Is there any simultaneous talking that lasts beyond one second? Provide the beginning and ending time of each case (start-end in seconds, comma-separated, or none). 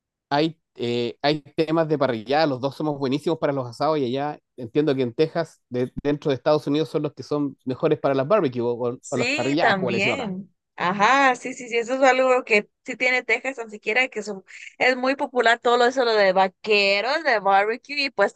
9.0-10.3